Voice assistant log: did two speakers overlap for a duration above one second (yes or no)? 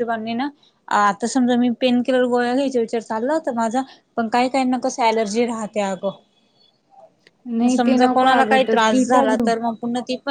yes